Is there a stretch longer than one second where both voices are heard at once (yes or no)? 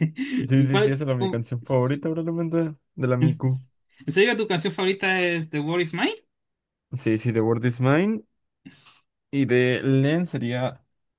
yes